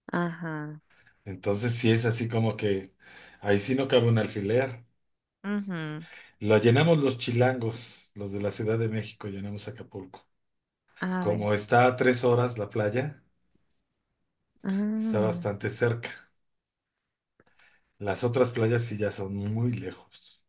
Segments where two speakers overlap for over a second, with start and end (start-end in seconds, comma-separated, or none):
none